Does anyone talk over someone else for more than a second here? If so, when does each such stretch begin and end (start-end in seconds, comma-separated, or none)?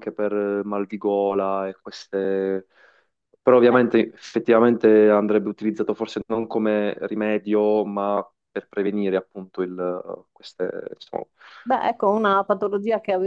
none